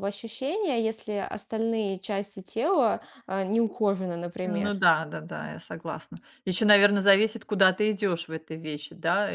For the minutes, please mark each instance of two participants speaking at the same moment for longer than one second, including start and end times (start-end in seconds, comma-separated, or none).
none